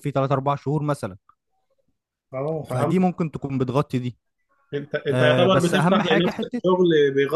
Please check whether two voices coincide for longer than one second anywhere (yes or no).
yes